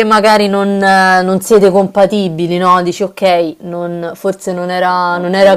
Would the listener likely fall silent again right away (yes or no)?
yes